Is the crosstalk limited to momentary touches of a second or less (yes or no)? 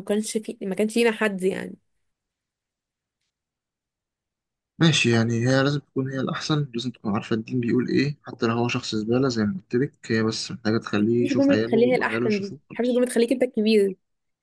no